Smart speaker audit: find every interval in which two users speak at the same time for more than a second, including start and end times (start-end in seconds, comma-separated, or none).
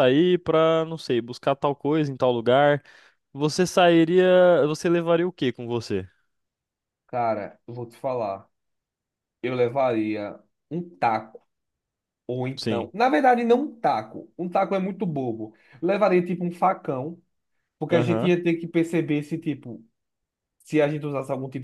none